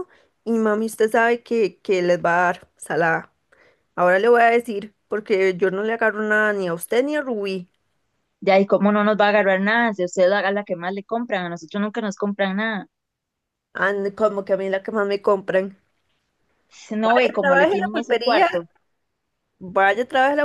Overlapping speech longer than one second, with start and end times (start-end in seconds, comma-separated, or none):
17.0-18.7